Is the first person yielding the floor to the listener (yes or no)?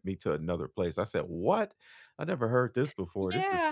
yes